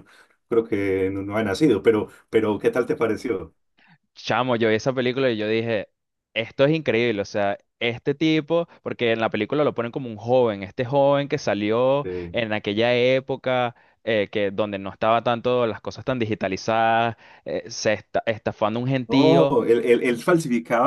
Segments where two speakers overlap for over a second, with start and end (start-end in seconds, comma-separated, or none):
none